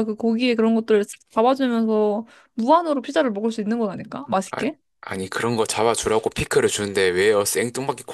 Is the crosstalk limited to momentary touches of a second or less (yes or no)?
yes